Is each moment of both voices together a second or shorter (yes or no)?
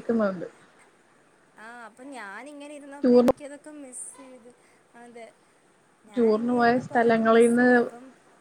no